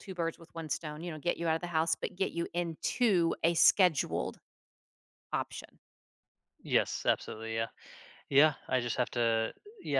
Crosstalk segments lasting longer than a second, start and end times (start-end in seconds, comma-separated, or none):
none